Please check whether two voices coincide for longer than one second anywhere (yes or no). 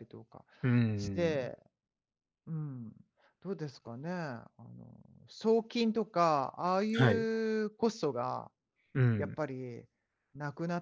no